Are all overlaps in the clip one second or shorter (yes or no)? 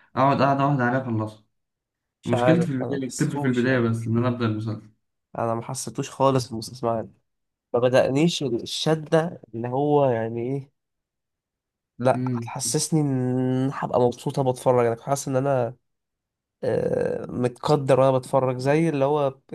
no